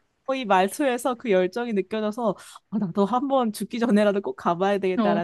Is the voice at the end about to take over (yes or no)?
no